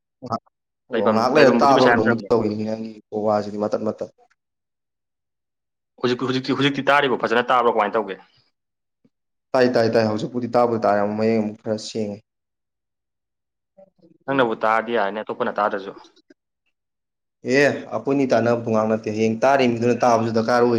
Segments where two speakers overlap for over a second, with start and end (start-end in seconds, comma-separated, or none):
0.9-2.3